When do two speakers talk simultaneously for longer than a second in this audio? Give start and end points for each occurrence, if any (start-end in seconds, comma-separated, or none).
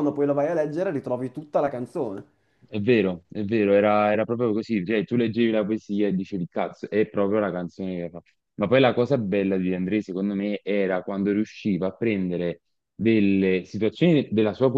none